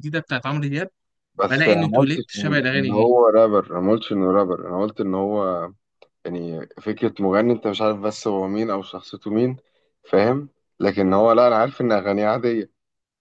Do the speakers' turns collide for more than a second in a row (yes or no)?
yes